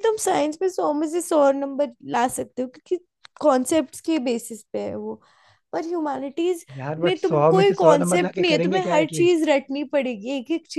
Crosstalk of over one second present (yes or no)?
yes